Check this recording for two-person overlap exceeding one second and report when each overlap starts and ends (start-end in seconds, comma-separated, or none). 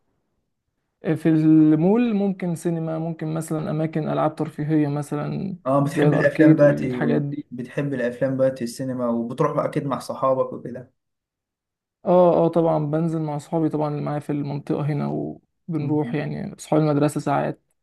5.7-7.0